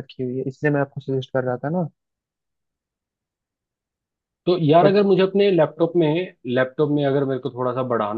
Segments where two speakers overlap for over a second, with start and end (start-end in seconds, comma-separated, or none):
none